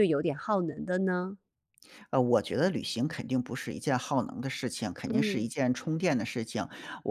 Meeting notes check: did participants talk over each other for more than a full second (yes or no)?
no